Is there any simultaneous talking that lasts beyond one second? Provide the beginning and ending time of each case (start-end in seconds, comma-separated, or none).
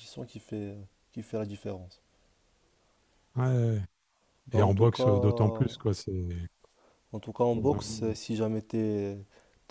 4.5-5.8